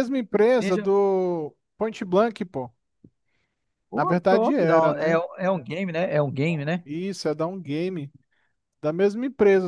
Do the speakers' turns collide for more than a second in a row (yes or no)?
yes